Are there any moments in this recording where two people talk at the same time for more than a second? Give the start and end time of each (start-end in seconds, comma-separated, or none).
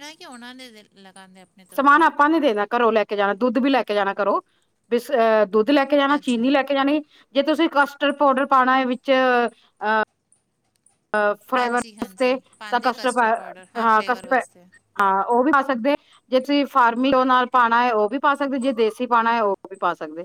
11.6-14.4